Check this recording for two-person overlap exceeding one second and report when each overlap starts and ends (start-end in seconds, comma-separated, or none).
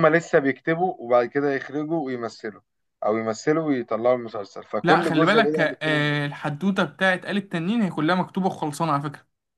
4.8-6.1